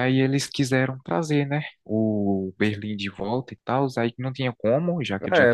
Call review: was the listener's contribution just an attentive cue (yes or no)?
no